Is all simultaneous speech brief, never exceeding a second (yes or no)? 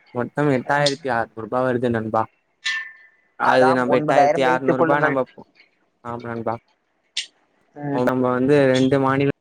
no